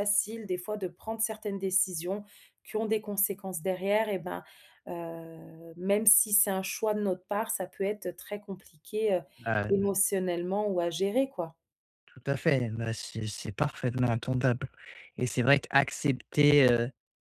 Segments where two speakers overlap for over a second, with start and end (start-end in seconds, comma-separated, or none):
none